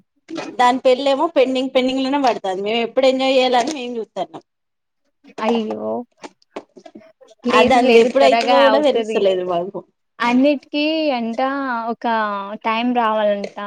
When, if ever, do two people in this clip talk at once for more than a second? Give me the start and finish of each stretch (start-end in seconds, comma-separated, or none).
7.6-9.2